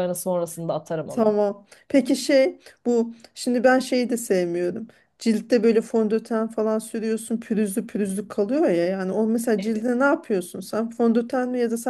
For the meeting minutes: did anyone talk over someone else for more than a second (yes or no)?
no